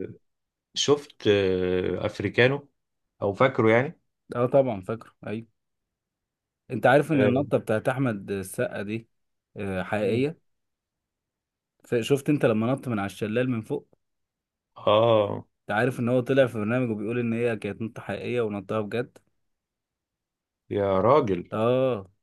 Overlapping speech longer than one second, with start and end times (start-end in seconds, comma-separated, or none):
none